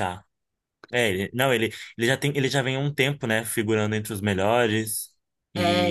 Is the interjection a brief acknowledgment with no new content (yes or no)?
no